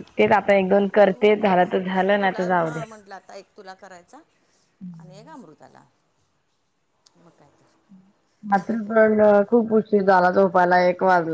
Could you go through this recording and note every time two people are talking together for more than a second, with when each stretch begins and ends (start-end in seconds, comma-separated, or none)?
0.9-2.8